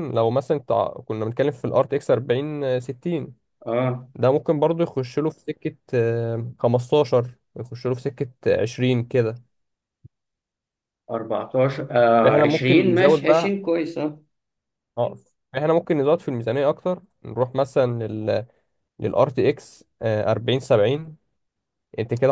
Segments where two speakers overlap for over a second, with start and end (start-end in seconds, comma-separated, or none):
12.2-13.5